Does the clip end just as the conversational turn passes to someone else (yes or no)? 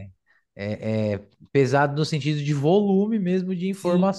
yes